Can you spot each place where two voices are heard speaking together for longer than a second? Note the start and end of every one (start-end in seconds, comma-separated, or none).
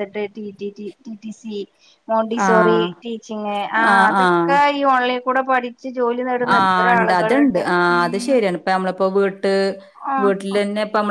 none